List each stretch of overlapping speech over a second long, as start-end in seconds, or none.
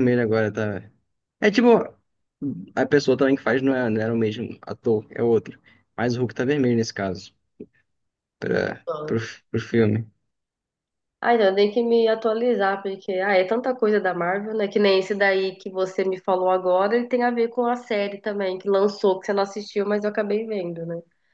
none